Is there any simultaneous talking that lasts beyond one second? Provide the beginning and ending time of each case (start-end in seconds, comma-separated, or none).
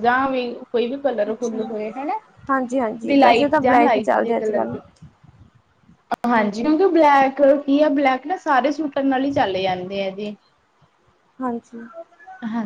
3.0-4.7